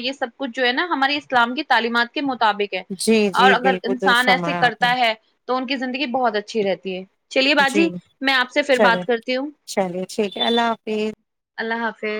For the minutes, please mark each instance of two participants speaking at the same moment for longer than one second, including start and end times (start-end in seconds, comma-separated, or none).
3.4-4.9